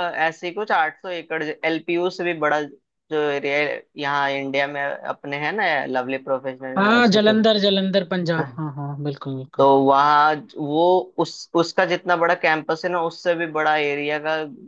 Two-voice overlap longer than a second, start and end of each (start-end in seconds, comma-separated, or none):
none